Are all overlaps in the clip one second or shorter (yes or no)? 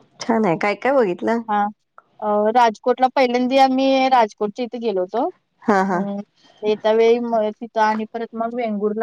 yes